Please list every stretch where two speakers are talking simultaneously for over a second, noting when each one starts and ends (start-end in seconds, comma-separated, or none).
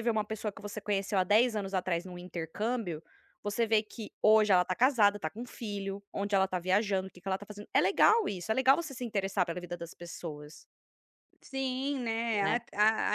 none